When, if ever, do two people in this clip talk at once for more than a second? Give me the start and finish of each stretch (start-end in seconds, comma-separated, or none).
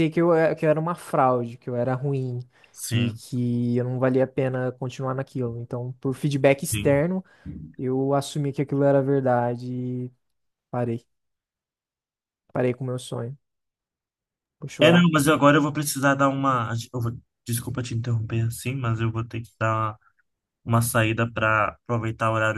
none